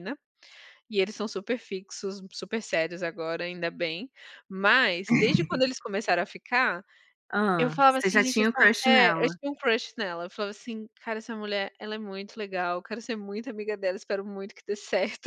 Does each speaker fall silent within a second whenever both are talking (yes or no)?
no